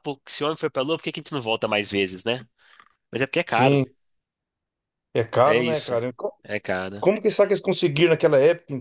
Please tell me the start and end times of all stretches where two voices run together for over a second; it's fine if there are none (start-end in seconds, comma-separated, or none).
none